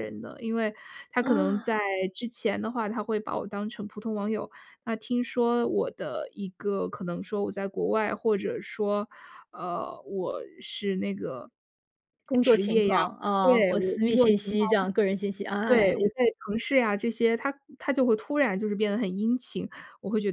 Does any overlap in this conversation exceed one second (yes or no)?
yes